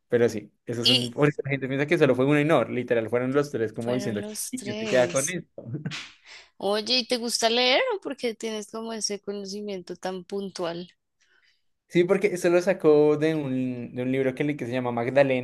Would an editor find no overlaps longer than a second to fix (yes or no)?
no